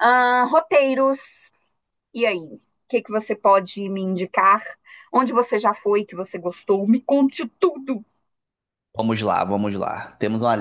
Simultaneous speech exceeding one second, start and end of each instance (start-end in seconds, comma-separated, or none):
none